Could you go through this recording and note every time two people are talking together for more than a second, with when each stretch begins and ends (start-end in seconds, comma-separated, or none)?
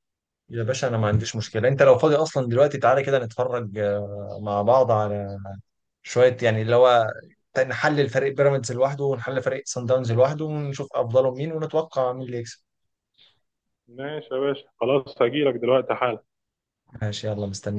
none